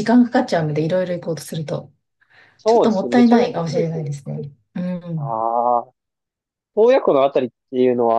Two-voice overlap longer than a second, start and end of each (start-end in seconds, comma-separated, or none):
2.7-4.1